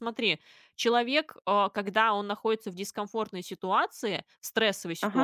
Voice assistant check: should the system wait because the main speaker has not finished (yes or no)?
yes